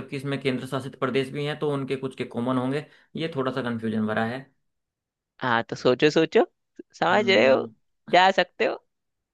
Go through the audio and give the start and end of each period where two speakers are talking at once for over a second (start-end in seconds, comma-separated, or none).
none